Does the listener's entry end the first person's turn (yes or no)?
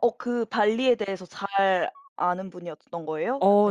yes